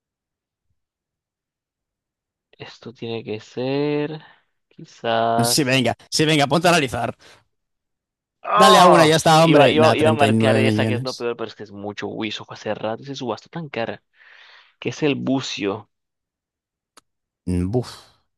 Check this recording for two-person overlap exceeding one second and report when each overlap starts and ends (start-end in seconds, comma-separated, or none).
8.5-11.3